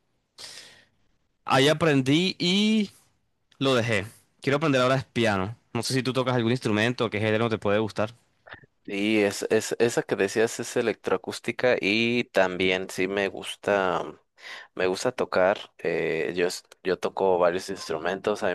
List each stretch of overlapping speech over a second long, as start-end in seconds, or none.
none